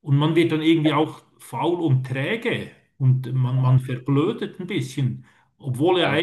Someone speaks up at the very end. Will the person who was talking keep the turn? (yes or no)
yes